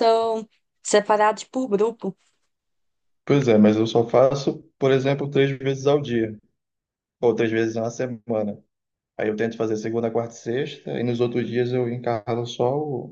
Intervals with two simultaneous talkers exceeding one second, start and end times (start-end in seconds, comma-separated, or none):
none